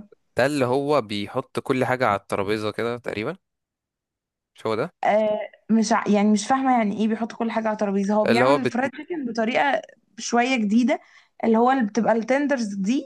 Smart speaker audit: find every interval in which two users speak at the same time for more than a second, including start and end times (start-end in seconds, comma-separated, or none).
none